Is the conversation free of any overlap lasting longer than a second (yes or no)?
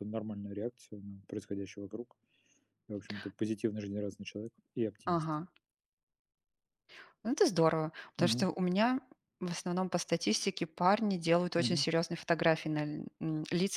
yes